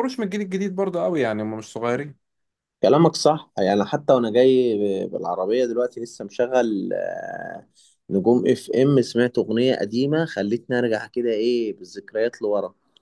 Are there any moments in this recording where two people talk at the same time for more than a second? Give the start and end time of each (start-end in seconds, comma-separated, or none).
none